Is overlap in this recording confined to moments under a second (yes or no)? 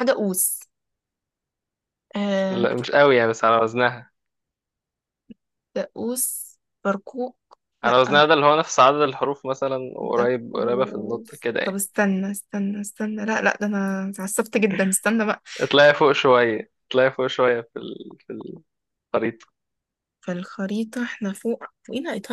no